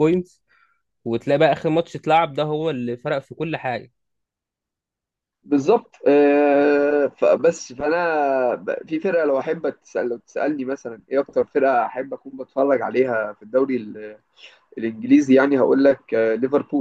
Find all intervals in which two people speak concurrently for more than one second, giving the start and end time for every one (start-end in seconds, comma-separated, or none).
none